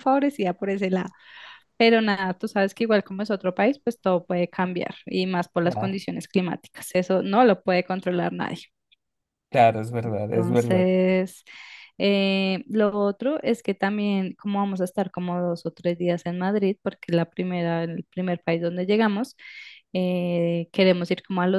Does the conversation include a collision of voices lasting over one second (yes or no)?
no